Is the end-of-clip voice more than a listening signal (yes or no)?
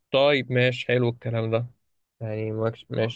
no